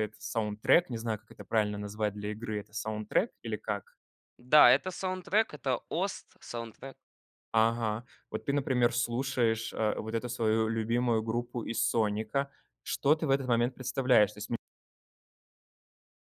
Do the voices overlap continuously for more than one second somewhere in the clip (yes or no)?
no